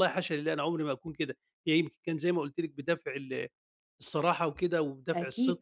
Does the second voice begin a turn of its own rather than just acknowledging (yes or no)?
no